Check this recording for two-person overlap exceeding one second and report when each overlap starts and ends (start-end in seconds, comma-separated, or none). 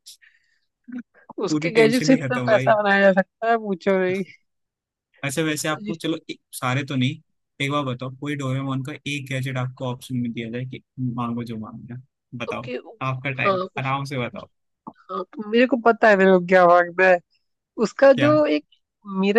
1.5-2.7